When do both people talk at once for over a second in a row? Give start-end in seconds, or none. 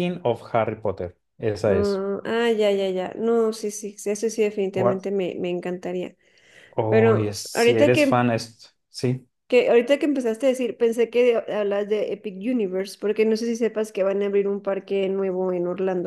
6.9-8.2